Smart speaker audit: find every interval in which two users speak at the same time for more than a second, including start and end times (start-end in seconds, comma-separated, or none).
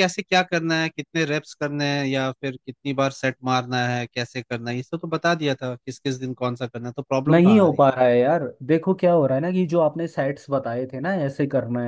none